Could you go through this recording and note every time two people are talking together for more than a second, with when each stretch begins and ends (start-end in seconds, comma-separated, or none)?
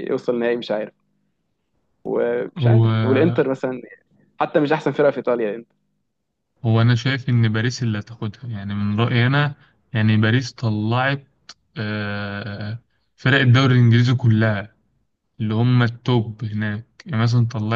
none